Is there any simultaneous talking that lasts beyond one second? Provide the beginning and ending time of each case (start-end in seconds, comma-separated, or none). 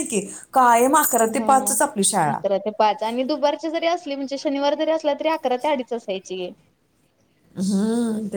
none